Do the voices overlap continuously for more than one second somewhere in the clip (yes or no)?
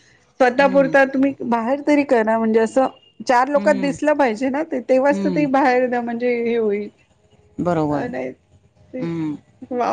yes